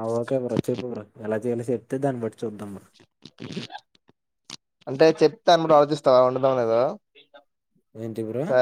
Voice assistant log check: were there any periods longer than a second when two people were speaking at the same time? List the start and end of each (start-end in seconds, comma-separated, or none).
none